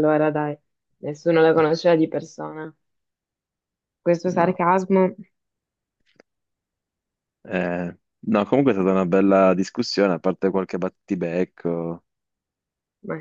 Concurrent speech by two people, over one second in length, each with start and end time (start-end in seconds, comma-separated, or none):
none